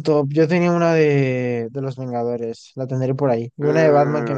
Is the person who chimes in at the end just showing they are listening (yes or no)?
no